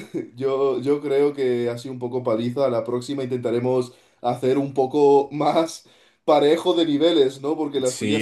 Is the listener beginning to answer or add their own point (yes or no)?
yes